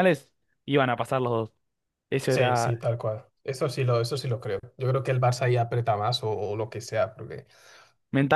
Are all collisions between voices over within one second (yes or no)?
yes